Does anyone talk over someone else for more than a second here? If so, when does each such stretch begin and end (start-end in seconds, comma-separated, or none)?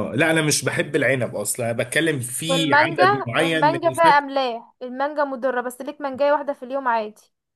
2.5-4.2